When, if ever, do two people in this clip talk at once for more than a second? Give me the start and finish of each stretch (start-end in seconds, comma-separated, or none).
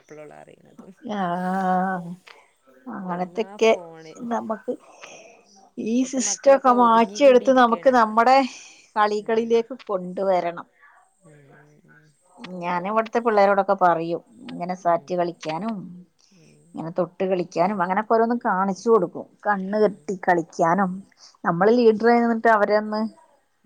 5.9-7.9